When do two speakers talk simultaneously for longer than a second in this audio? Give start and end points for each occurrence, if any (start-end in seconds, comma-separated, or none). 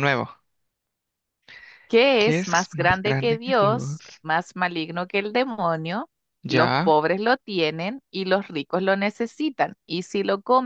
2.2-4.0